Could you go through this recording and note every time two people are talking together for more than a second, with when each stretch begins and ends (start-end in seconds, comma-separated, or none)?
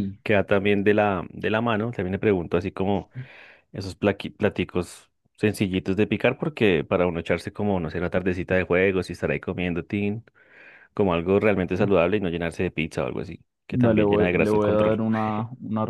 13.7-15.0